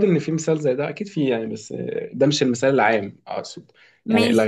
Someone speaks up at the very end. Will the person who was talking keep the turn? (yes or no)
yes